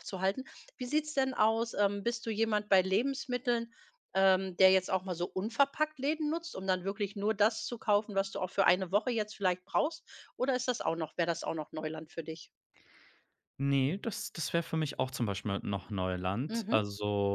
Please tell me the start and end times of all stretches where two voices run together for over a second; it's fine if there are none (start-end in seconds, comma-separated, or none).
none